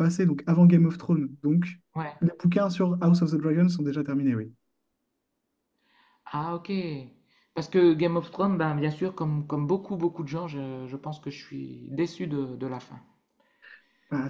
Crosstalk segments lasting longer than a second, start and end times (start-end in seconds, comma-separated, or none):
none